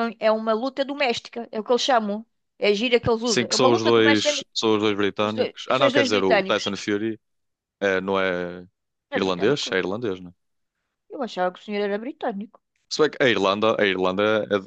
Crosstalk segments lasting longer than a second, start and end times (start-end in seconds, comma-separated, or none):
3.2-4.5, 5.2-6.7